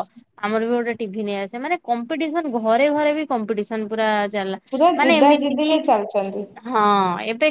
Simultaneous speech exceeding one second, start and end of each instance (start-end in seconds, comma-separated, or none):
none